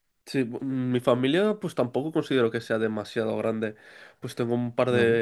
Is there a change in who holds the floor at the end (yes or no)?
no